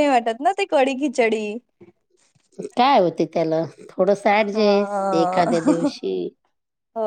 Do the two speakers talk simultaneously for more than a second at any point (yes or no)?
yes